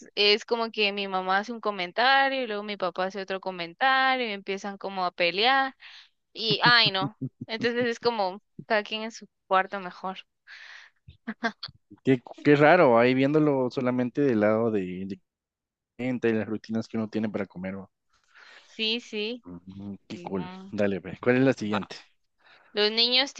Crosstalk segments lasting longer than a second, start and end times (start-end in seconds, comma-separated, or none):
none